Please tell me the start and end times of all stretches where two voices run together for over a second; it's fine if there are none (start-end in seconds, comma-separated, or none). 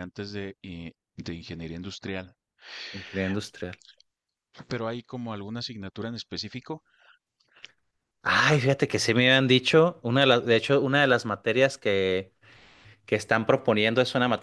none